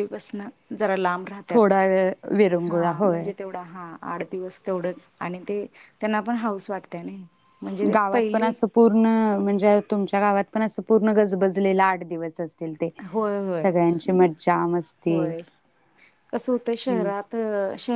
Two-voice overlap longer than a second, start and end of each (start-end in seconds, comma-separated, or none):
none